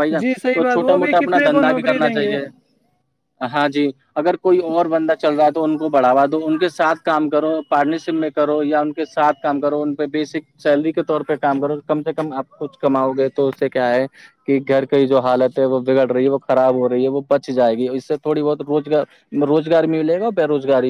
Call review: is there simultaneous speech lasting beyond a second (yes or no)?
yes